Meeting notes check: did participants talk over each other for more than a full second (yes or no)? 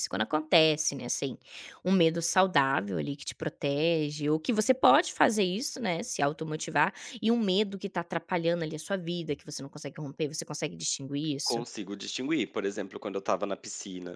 no